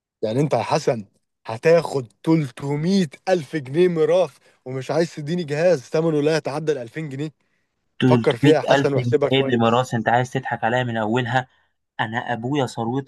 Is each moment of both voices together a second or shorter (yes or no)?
no